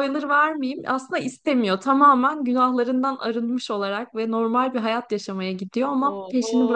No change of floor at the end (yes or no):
no